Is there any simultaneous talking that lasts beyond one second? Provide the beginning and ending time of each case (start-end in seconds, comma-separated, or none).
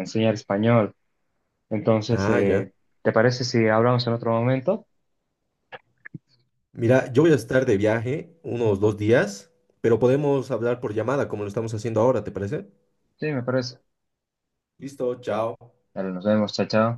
none